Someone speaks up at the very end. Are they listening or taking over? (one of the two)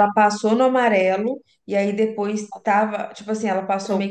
listening